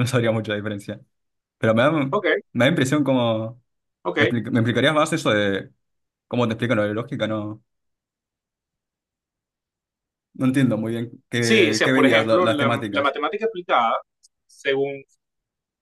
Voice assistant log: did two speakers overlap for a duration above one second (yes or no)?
yes